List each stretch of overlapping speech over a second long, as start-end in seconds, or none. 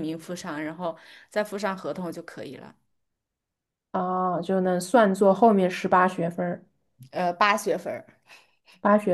none